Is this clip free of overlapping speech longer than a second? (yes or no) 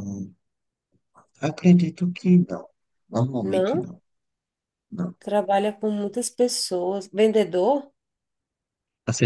yes